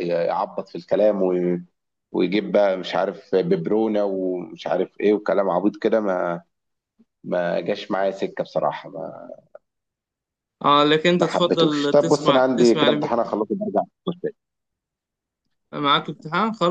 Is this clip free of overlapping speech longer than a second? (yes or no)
no